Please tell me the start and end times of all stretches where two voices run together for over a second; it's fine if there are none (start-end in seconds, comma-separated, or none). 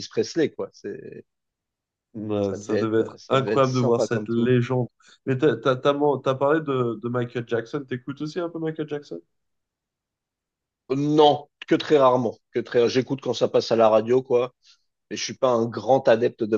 2.4-4.5